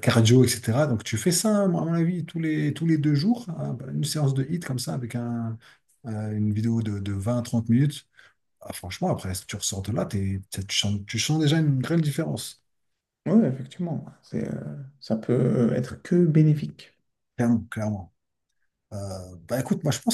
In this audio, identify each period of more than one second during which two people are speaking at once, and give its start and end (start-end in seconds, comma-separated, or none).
none